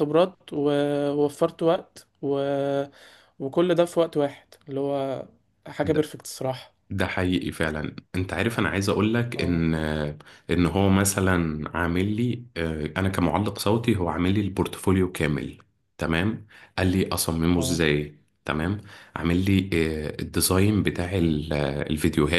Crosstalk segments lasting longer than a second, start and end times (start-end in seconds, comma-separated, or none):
none